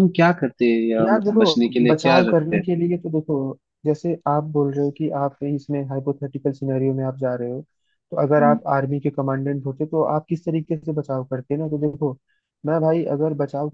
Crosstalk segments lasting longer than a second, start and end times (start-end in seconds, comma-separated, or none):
1.0-2.6